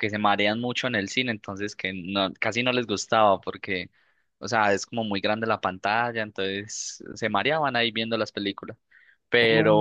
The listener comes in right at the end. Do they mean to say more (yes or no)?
no